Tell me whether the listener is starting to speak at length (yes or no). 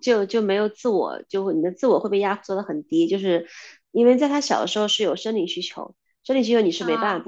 no